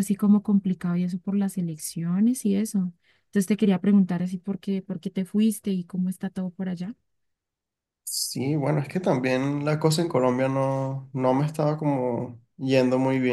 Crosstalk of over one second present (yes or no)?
no